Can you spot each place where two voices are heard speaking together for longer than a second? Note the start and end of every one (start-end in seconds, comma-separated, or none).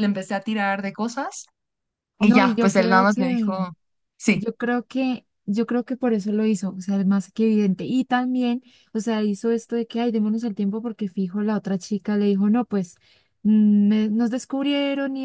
2.2-3.6